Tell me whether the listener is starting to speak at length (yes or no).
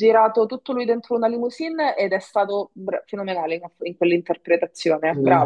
yes